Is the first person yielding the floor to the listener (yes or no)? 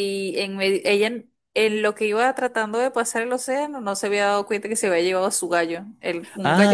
yes